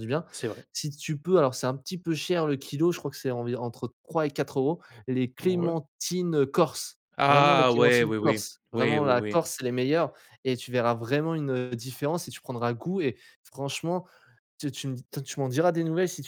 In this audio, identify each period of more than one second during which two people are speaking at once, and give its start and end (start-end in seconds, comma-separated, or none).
7.2-9.4